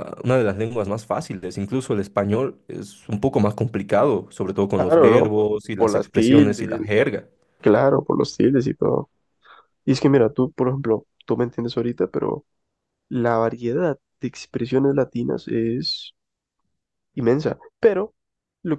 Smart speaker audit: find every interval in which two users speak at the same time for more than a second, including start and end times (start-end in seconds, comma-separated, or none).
4.7-6.9